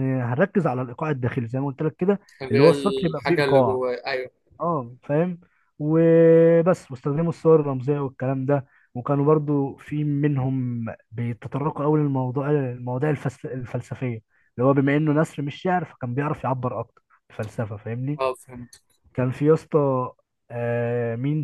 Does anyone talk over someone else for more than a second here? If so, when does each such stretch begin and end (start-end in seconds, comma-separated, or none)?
2.4-3.8